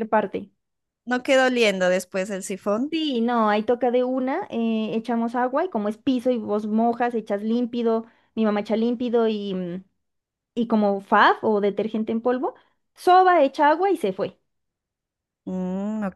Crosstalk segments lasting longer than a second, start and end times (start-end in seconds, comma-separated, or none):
none